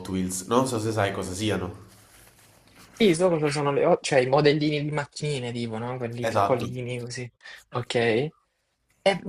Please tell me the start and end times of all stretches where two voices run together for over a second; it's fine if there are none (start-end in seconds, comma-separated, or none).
none